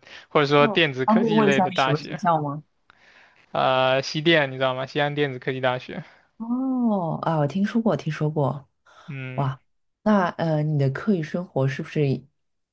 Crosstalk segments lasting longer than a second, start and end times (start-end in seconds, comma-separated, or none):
0.6-2.2